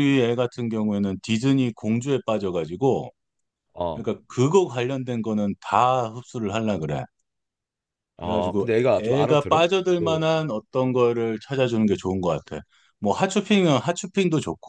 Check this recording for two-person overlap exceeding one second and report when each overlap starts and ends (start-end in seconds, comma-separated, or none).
8.2-10.2